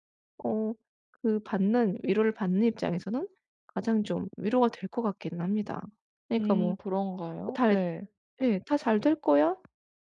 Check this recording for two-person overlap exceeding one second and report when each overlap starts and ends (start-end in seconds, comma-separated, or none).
none